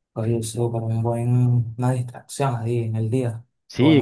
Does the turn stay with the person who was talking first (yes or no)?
no